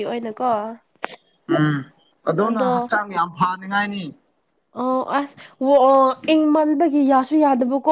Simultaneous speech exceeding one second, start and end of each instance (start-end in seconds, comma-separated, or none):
none